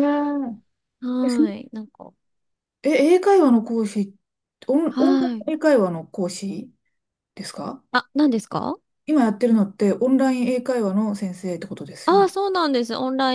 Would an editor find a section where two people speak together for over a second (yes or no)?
no